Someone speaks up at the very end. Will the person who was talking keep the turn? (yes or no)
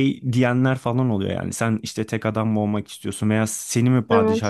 yes